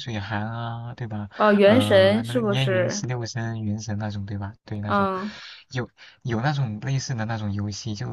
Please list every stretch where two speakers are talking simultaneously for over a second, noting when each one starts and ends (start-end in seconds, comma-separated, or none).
1.4-3.1